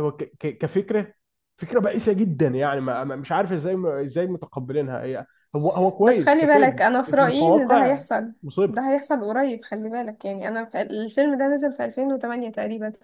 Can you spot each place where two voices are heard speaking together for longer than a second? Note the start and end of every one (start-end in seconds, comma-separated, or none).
6.0-8.0